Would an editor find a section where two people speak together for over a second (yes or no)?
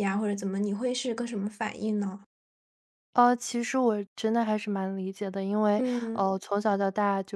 no